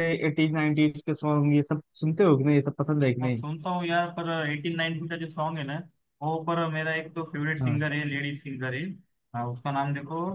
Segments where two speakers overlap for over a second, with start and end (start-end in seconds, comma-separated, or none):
none